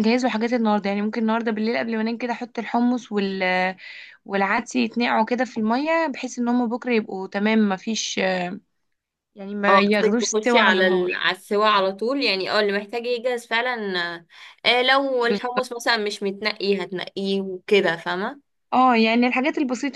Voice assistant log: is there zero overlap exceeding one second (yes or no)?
no